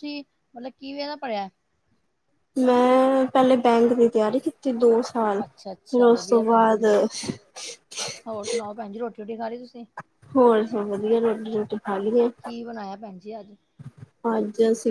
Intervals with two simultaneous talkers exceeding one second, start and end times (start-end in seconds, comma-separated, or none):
5.4-6.8